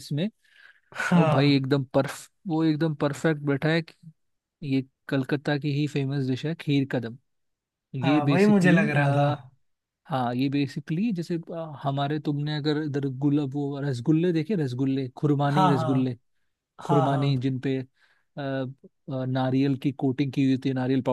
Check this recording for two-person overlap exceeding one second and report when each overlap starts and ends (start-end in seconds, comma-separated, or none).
8.0-9.3